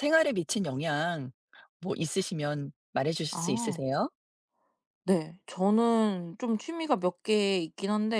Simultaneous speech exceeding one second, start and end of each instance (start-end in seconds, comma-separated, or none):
none